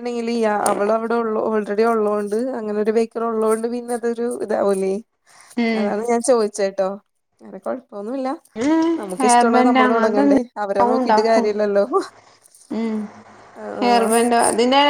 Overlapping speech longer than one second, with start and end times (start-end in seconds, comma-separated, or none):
9.2-11.5